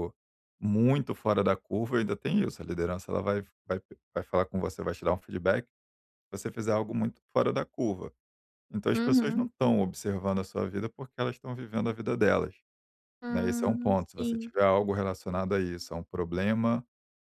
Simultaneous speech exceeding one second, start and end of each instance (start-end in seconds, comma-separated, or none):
13.3-14.5